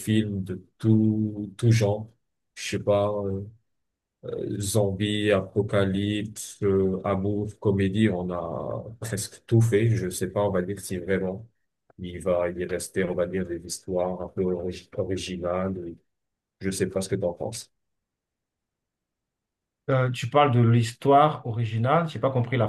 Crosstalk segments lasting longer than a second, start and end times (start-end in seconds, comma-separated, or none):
none